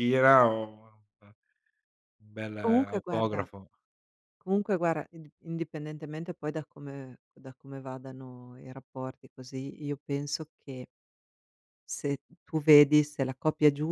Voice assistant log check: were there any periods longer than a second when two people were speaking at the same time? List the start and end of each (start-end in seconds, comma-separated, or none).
none